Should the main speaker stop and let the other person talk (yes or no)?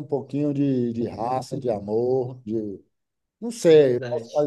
no